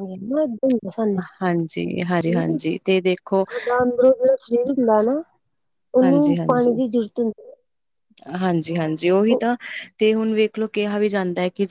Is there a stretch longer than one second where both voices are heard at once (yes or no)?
yes